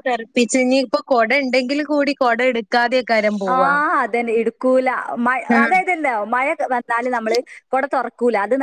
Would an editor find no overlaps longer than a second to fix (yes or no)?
yes